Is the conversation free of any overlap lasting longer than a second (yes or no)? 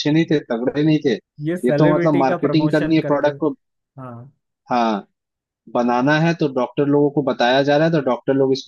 no